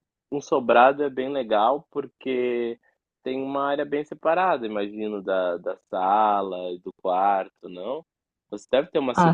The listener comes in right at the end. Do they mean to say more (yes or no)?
no